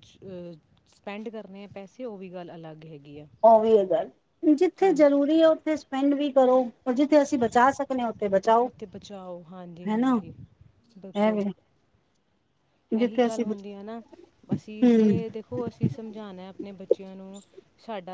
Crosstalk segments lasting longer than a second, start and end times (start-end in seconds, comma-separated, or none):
none